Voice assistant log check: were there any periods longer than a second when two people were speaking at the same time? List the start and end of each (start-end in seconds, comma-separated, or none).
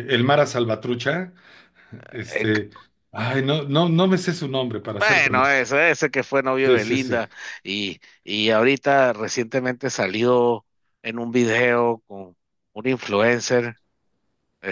none